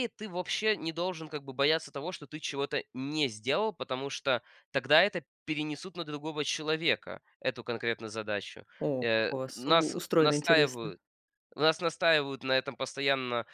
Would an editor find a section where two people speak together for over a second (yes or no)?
yes